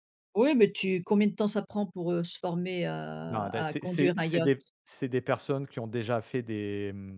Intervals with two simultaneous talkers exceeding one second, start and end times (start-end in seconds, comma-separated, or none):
3.3-4.5